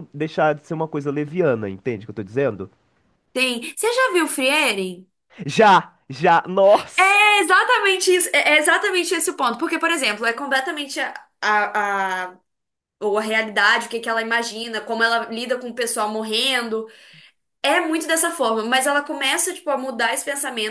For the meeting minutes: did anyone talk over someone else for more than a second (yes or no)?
no